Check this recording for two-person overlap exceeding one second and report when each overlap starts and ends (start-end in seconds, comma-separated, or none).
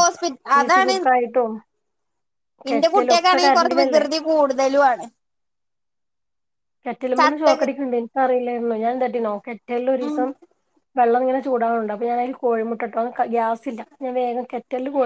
2.7-4.0